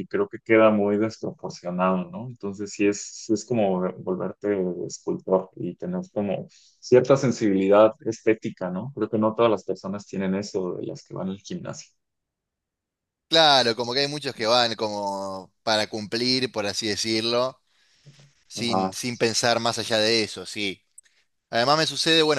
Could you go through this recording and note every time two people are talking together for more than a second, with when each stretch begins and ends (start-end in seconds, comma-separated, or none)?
none